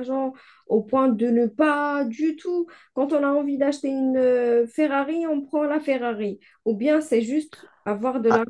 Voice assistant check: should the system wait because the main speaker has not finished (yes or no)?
no